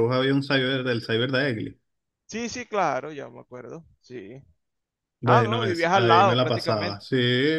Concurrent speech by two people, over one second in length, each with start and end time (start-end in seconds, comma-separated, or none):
5.2-7.0